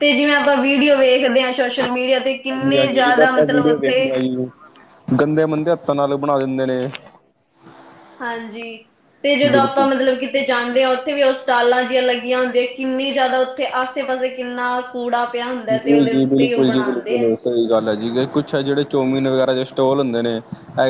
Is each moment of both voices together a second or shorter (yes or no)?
no